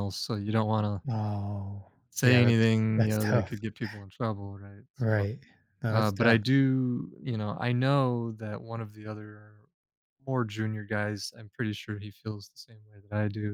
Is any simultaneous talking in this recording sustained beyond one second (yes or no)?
yes